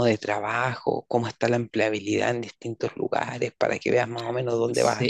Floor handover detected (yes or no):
yes